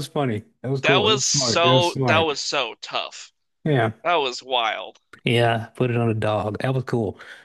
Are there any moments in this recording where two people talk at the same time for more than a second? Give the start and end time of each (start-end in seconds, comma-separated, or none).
0.8-2.3